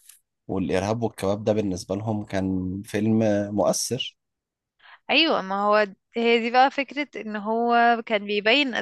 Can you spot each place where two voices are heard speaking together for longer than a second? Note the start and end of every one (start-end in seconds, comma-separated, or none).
none